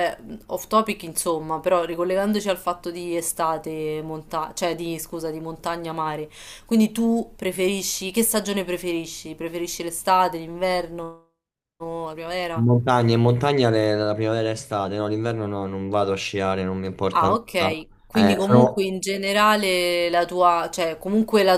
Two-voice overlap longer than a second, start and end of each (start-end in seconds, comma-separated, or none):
17.1-18.9